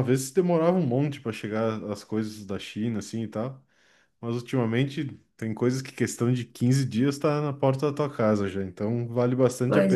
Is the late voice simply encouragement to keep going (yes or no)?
yes